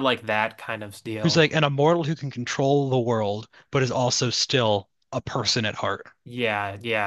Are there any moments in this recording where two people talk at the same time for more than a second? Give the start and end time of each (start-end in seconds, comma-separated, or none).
none